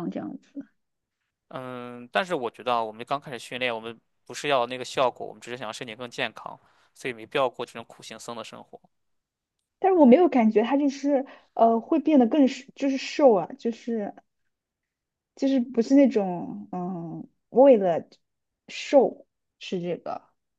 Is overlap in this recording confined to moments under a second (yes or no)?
yes